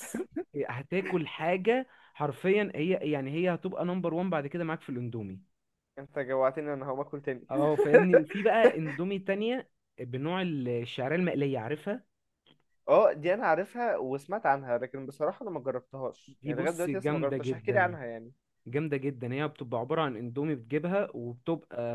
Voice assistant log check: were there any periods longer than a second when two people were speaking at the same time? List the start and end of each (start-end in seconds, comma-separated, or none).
16.3-17.9